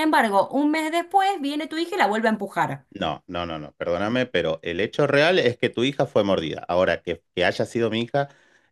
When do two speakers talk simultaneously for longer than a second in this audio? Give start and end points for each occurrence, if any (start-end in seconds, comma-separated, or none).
none